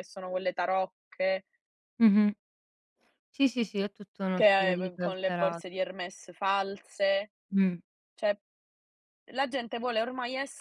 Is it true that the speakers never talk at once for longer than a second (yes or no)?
no